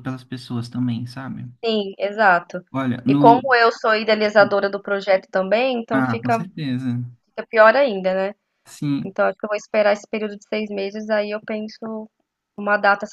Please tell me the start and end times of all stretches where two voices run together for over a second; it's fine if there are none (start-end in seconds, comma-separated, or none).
none